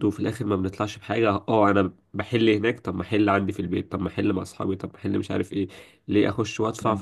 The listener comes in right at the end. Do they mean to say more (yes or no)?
no